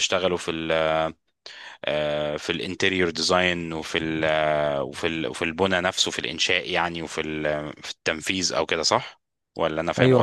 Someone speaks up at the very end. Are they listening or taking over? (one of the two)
taking over